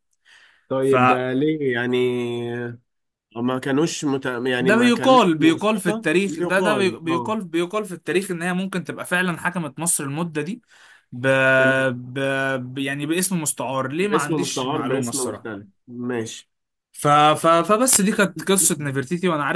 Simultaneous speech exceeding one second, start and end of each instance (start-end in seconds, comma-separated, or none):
4.6-7.3, 14.1-15.5